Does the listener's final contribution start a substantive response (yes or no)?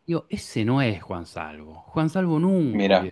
no